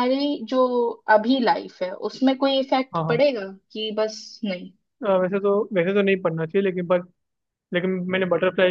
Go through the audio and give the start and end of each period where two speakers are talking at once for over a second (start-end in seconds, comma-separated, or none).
none